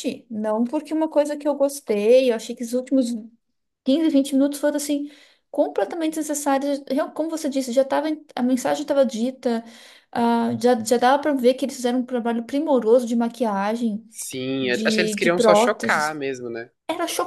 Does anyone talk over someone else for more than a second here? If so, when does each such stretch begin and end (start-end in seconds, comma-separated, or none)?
14.6-16.2